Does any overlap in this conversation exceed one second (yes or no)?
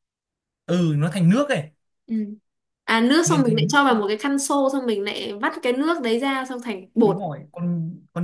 no